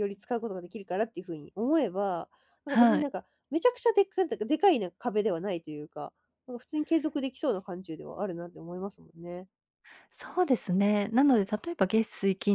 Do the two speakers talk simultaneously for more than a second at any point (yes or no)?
no